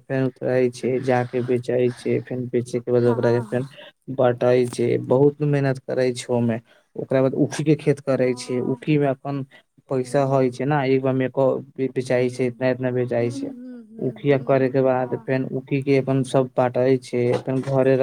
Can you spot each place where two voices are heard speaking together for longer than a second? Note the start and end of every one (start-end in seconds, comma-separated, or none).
13.2-15.3